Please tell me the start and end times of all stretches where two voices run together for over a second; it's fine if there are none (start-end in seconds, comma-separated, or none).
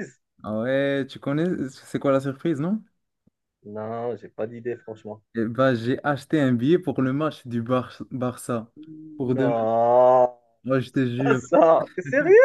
none